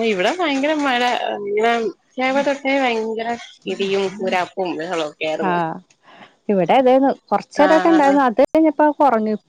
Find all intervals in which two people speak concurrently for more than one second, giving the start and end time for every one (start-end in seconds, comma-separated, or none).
none